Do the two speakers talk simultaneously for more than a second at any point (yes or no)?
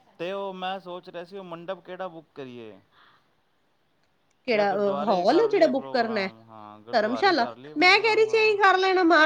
yes